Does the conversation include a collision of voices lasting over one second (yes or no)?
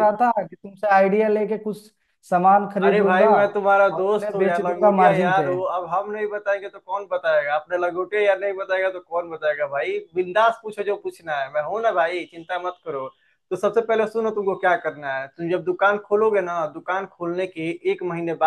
yes